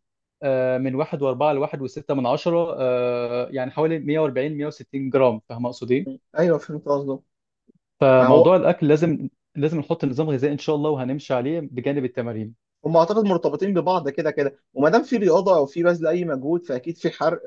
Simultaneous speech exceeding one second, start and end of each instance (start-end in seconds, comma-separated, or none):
none